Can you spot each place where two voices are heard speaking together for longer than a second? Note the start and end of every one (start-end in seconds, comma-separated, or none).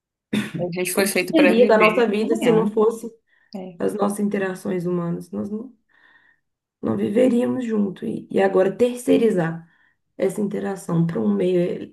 0.9-2.7